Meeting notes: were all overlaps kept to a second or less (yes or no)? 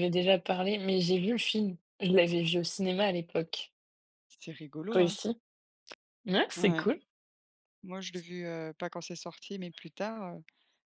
yes